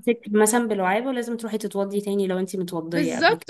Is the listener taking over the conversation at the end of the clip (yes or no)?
yes